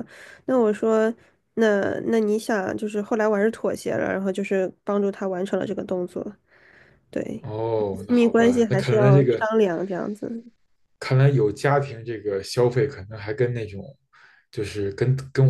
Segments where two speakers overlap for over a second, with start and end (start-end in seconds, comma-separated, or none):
7.9-9.5